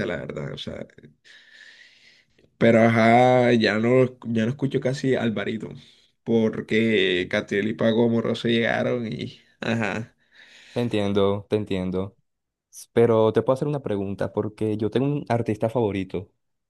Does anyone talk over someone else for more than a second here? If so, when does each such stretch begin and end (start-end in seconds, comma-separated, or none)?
none